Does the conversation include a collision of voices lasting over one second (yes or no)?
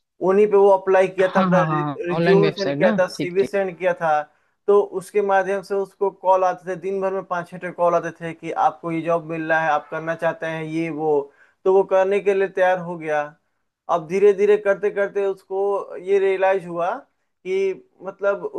yes